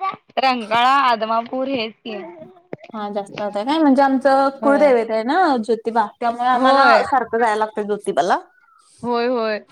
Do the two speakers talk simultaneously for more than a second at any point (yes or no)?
no